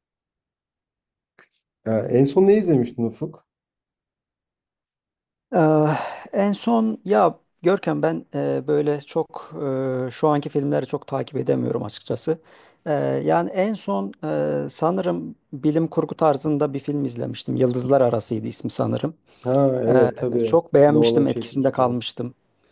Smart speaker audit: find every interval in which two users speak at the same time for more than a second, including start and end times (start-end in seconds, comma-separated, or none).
19.9-21.9